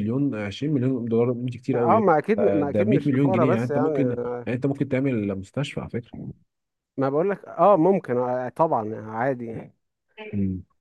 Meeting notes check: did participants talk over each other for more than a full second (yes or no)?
yes